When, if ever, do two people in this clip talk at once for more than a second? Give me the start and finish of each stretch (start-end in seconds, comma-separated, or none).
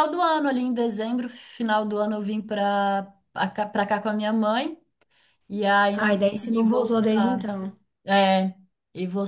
5.9-7.5